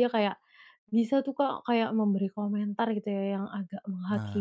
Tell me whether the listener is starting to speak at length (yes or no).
no